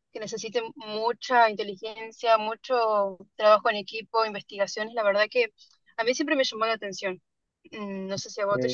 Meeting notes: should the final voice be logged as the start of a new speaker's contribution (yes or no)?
no